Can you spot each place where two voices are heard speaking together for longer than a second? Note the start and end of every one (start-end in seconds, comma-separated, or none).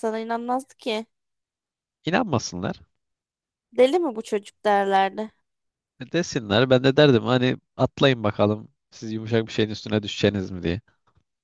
none